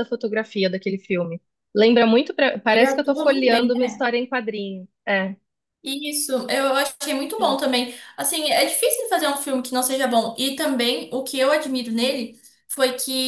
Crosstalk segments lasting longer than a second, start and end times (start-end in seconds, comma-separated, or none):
2.7-4.0